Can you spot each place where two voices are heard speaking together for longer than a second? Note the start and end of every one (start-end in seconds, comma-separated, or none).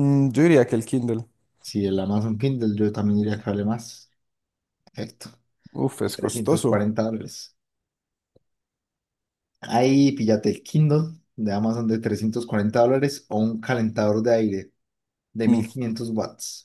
none